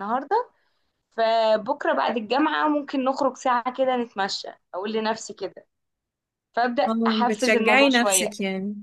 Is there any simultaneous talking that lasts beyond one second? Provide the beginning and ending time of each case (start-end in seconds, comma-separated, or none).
6.9-8.3